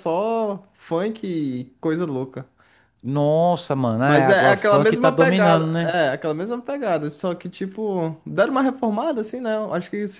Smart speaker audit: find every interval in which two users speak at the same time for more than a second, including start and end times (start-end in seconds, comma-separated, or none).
4.0-6.0